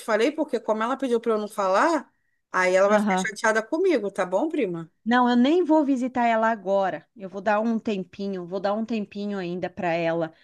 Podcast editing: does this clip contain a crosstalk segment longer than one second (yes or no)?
no